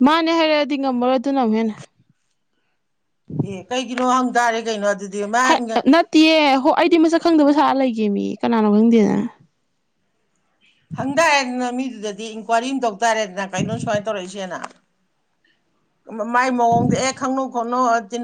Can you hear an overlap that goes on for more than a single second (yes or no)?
no